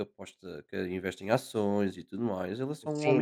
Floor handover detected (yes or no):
yes